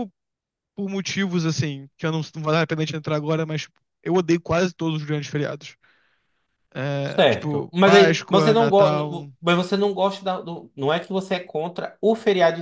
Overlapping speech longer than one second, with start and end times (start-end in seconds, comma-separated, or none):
7.1-9.0